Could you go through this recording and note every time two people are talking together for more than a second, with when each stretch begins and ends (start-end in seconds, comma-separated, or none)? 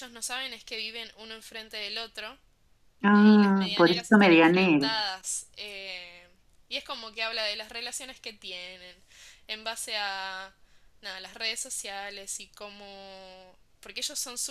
3.1-4.9